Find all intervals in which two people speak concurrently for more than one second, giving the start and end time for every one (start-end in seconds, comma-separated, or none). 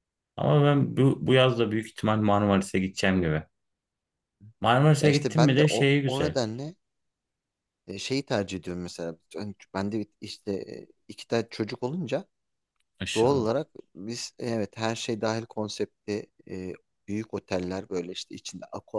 5.0-6.3